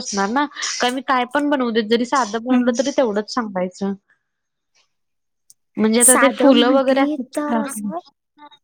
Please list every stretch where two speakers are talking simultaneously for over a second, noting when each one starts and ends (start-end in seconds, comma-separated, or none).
6.1-7.7